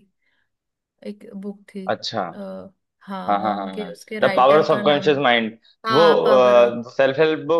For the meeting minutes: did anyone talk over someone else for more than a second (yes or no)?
yes